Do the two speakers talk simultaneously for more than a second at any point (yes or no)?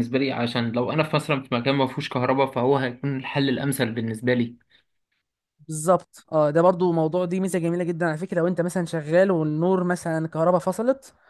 no